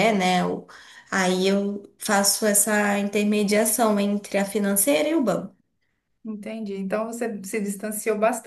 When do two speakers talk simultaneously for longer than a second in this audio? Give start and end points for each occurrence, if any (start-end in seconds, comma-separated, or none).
none